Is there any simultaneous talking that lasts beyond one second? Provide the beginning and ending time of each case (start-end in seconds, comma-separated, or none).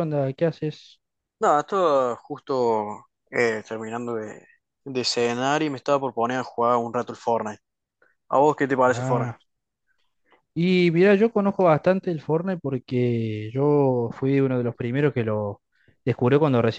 none